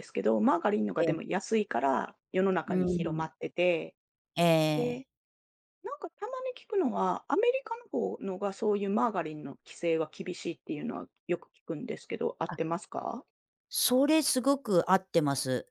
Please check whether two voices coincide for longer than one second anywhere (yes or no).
no